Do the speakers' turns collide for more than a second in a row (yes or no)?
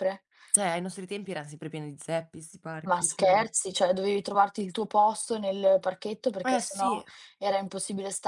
no